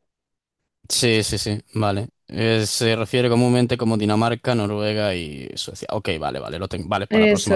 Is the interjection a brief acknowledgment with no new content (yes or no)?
no